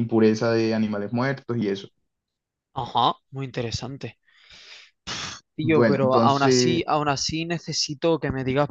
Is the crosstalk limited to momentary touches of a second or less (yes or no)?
no